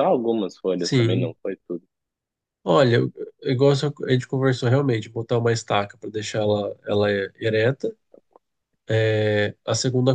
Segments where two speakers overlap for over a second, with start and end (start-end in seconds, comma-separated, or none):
none